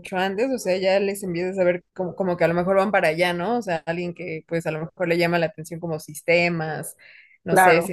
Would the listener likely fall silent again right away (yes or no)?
yes